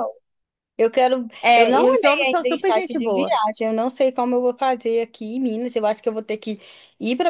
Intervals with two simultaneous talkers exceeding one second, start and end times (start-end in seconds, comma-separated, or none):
1.4-3.4